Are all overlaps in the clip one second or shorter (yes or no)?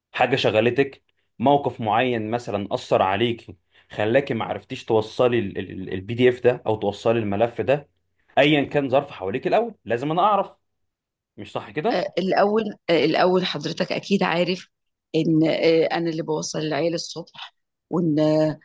yes